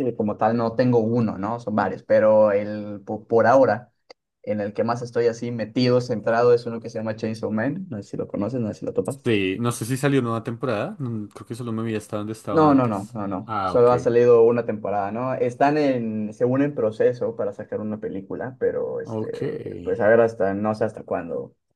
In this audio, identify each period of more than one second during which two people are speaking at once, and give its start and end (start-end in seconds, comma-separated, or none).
12.5-13.9